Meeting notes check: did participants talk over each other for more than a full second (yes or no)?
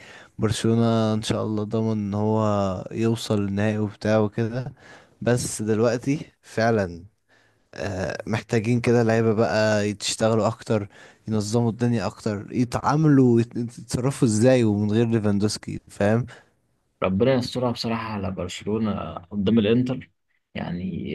no